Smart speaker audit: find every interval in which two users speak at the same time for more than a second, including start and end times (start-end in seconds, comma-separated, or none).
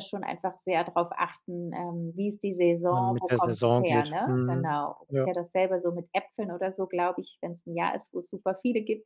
2.9-5.3